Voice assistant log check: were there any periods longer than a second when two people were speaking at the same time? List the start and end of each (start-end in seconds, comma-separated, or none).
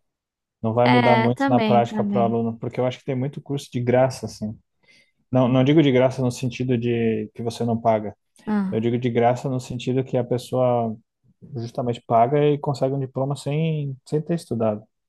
0.8-2.4